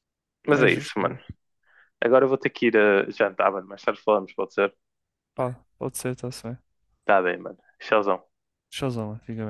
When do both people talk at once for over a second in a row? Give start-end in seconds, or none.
none